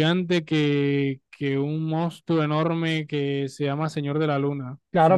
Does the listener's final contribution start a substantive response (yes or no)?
yes